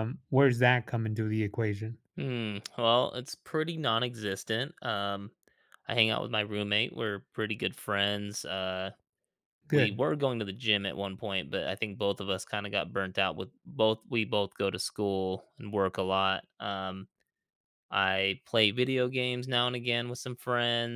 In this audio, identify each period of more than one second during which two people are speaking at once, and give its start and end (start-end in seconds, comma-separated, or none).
none